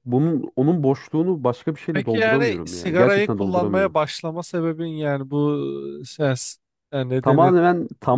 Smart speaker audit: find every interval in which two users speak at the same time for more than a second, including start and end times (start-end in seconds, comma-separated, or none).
1.9-4.0